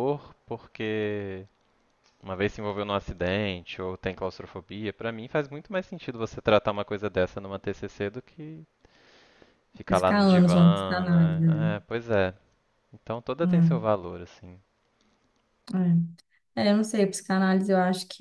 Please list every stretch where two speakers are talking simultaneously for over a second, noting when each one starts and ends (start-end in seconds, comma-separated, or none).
9.9-11.7